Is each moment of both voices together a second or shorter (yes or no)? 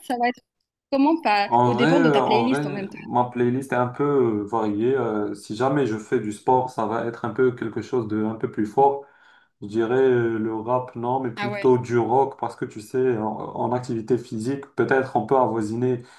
no